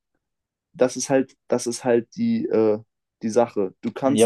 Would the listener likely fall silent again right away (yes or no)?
no